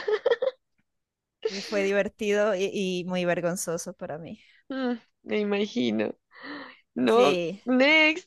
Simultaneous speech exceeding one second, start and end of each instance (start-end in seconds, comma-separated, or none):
none